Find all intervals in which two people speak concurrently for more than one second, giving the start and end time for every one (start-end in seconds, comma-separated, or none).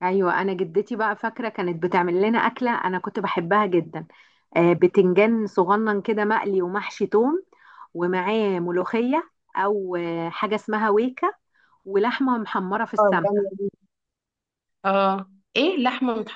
none